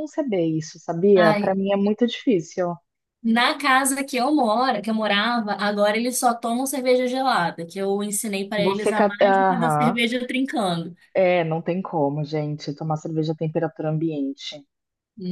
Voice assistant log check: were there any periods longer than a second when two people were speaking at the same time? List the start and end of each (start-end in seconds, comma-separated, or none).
8.6-10.0